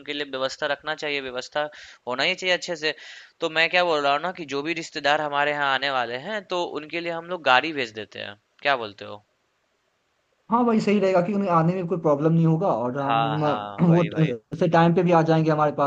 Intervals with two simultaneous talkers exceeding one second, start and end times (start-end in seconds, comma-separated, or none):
13.0-14.3